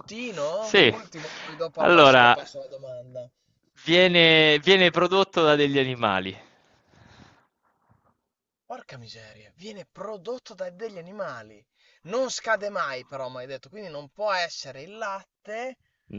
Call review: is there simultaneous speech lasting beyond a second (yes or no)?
no